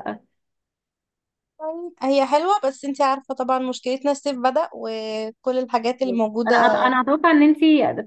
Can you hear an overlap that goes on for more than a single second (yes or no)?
no